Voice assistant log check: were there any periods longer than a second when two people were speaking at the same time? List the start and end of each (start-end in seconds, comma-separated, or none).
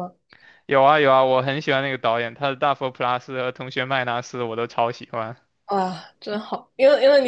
none